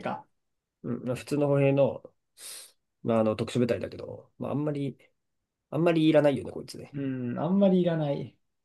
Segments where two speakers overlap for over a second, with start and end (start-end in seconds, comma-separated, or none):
none